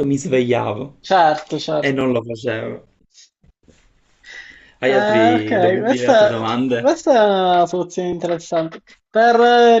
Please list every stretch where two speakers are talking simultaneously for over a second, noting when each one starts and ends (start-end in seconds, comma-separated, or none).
4.8-6.4